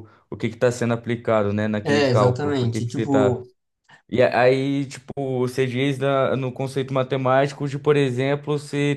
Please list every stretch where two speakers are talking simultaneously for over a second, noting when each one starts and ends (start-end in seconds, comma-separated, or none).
1.8-3.4